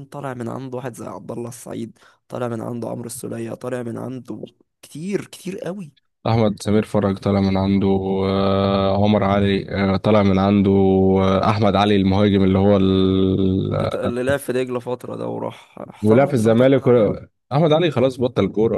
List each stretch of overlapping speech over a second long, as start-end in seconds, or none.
16.0-17.2